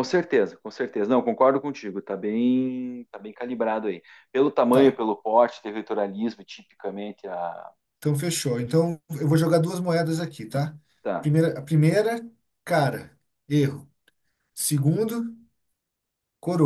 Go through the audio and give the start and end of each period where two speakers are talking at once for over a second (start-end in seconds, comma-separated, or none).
none